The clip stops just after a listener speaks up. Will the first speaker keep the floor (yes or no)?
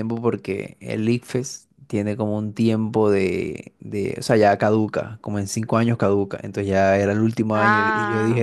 yes